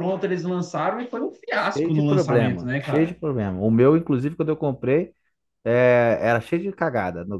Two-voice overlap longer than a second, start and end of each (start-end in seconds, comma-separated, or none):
1.5-3.2